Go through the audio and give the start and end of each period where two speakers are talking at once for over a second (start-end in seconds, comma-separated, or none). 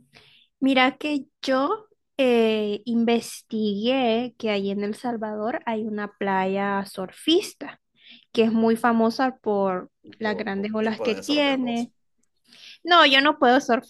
10.0-11.9